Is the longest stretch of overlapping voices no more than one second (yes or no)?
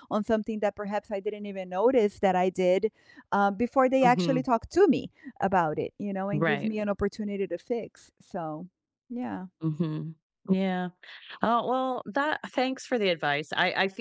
yes